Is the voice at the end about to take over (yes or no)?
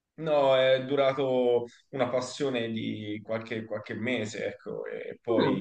no